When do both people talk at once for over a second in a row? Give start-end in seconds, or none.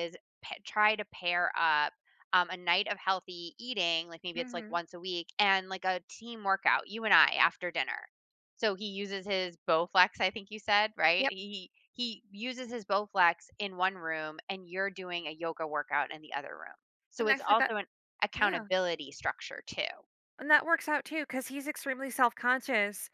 none